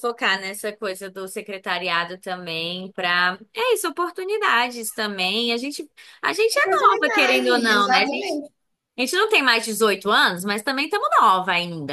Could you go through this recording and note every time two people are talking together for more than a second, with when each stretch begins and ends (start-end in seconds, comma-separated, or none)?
6.6-8.4